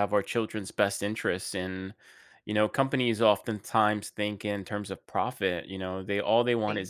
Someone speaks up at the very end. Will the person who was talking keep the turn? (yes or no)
yes